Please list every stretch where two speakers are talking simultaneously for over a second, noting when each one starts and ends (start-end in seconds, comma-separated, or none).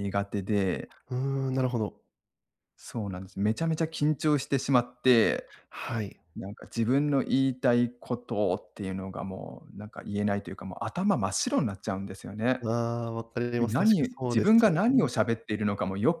13.6-15.1